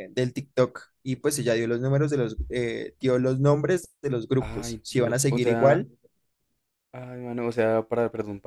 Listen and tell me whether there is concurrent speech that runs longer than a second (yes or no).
yes